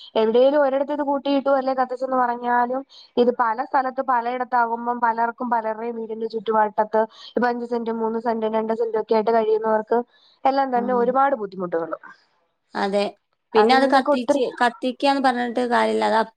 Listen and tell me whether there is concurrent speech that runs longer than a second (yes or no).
no